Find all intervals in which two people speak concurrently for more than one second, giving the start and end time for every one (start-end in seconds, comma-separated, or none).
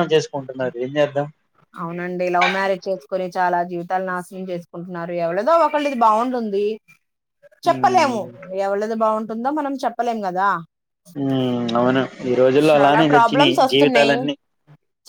12.7-14.2